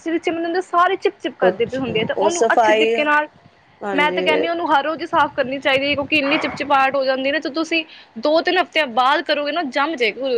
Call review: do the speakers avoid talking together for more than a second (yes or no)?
no